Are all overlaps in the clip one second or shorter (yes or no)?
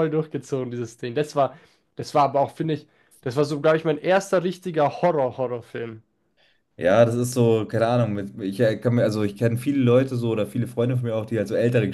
yes